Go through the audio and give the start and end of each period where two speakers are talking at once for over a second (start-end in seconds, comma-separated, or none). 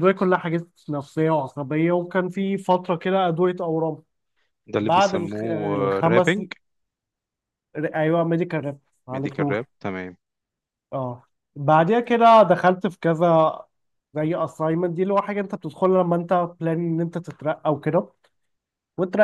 4.8-6.4